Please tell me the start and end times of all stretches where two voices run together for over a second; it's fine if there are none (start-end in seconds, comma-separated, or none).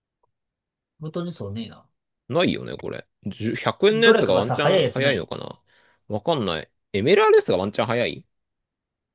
3.9-5.3